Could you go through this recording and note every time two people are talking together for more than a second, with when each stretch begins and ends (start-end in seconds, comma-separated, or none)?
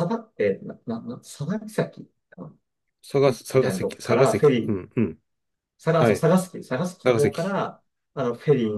3.2-4.8